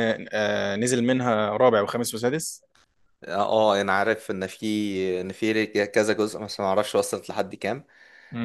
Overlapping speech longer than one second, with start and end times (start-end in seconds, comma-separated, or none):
none